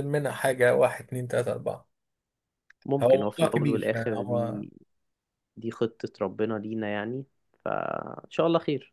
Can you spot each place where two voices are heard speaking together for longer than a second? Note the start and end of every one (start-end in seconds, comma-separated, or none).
3.0-4.6